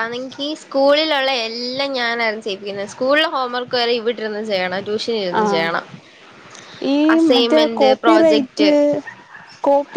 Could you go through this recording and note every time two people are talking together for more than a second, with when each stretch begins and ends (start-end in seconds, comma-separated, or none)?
7.3-8.7